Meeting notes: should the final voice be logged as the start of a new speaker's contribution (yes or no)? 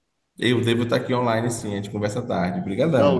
yes